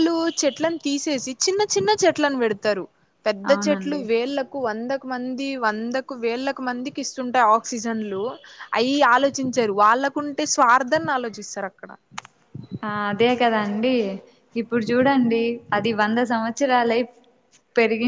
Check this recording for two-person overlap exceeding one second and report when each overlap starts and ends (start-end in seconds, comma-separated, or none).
none